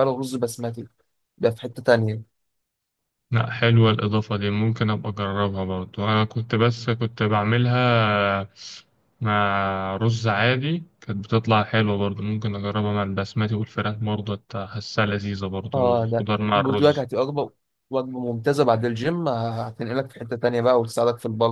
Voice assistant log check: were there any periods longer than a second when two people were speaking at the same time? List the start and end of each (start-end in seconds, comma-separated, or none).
15.7-17.1